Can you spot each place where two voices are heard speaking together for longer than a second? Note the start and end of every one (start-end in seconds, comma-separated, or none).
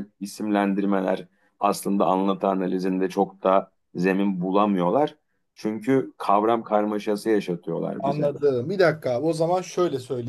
none